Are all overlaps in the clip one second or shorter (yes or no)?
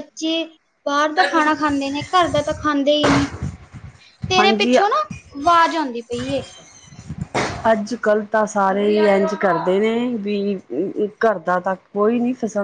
yes